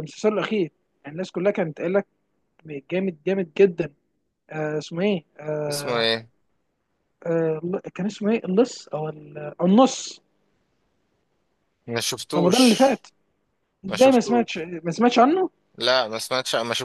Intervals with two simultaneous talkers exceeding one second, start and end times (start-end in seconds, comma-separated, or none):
none